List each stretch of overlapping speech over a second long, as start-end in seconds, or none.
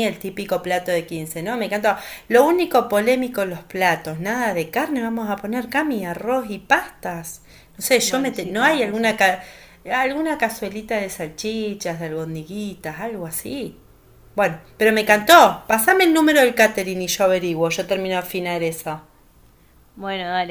8.0-9.2